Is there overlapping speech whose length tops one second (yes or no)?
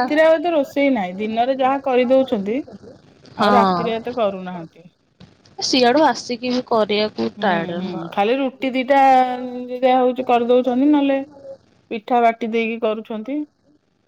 yes